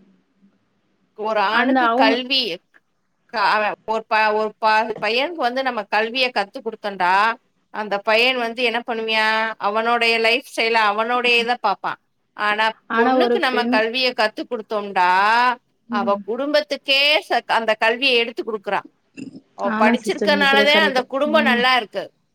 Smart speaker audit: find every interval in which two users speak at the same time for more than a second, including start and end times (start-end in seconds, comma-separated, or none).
19.8-21.6